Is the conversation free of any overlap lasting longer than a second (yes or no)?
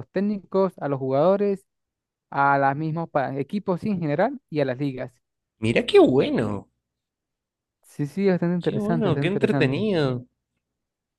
no